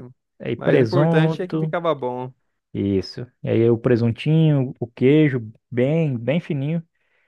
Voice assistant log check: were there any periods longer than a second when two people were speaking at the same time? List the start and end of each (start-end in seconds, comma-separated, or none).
0.6-1.8